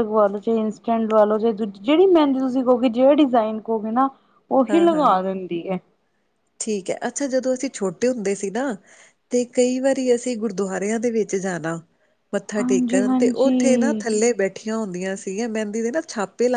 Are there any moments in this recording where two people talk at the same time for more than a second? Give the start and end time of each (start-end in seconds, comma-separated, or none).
12.6-14.0